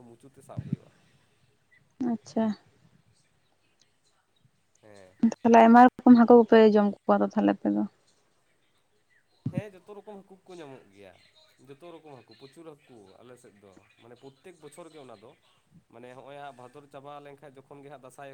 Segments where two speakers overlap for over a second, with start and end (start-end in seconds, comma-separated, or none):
none